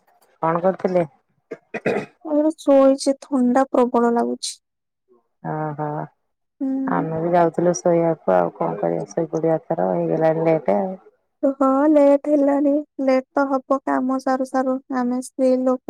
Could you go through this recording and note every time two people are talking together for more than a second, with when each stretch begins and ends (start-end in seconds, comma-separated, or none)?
none